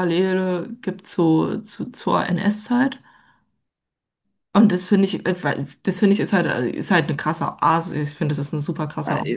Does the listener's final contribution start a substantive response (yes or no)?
yes